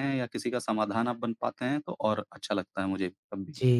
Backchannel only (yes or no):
no